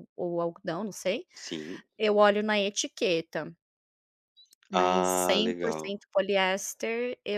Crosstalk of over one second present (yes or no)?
yes